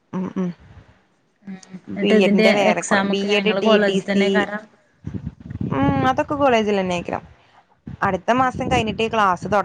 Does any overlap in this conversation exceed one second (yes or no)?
yes